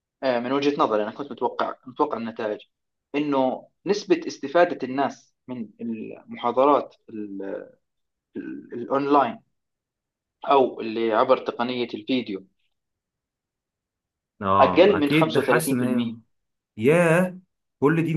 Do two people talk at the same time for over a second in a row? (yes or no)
yes